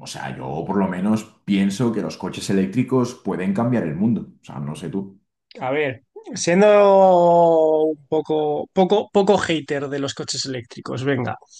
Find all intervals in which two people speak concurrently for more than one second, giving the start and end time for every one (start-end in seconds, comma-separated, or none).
none